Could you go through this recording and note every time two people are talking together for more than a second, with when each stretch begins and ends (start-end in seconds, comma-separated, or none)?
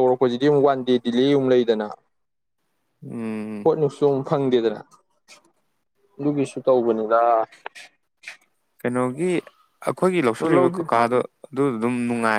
none